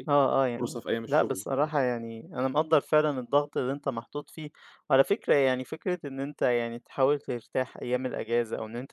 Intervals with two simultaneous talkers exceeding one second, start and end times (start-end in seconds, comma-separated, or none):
0.6-2.0